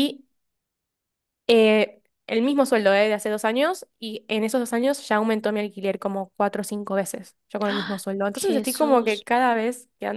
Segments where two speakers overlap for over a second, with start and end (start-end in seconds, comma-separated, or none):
7.6-9.2